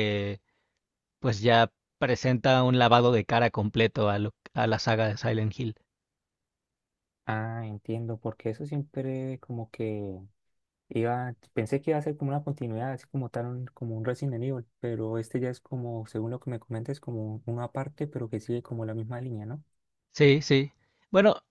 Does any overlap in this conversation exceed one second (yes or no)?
no